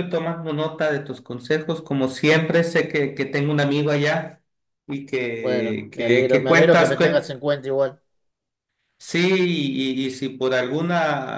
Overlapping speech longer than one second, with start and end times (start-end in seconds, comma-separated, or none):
5.4-7.3